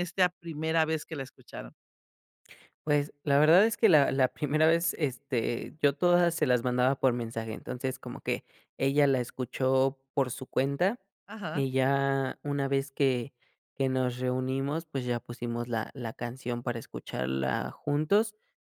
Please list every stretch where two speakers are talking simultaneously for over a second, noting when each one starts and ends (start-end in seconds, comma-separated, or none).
none